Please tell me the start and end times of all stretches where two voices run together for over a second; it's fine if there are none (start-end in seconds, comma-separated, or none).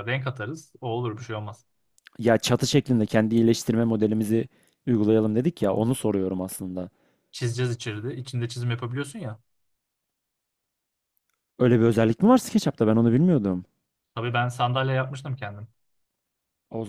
none